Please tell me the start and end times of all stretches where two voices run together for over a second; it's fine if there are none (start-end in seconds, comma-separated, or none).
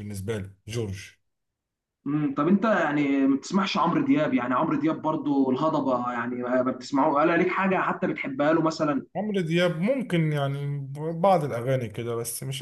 none